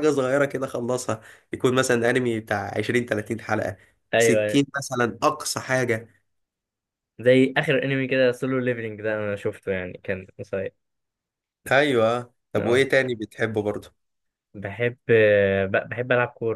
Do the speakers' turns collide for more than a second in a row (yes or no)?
no